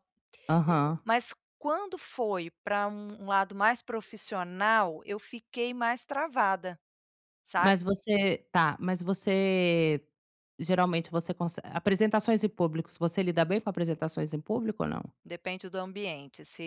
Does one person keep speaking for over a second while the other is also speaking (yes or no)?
no